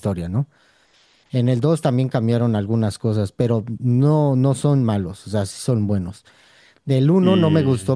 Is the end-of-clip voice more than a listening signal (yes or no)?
no